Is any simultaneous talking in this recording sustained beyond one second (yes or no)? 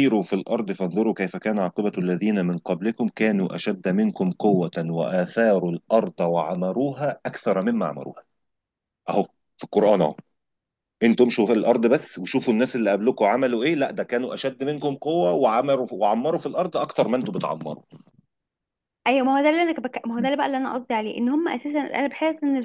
no